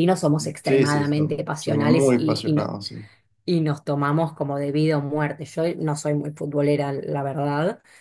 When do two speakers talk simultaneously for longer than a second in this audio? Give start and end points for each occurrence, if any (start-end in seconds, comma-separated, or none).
0.6-2.7